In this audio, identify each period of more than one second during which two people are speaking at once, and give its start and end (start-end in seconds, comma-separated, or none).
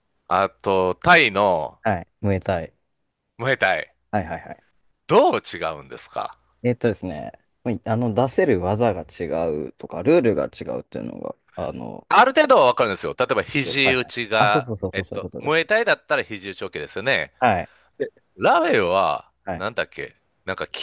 13.8-15.7